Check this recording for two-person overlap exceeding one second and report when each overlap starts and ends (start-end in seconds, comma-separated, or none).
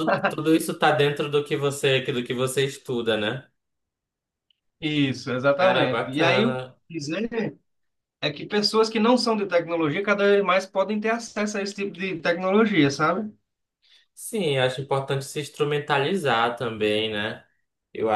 5.6-6.8